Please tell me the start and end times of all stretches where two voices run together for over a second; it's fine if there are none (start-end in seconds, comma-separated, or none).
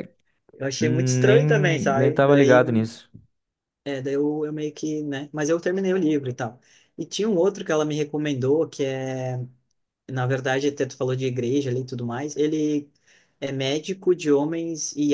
0.8-2.6